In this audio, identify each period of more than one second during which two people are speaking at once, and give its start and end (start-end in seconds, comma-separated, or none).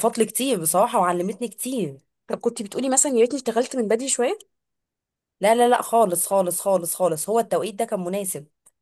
none